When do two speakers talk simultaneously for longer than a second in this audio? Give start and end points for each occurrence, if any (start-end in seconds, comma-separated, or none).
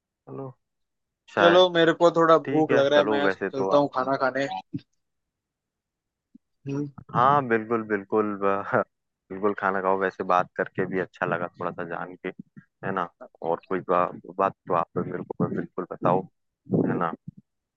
2.5-3.8